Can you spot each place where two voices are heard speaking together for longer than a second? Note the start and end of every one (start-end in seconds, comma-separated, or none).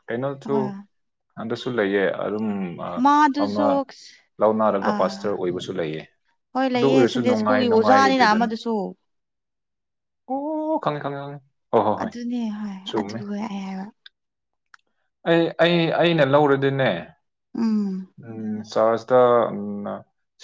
6.7-8.5